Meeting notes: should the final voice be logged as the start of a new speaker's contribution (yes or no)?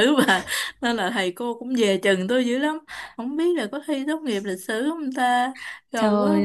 yes